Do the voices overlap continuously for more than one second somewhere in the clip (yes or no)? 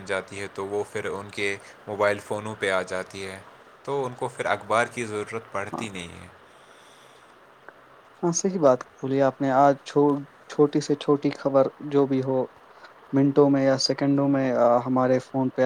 no